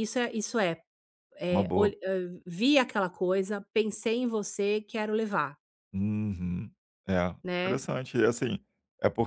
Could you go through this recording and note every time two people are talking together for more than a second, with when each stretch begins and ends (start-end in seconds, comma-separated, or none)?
none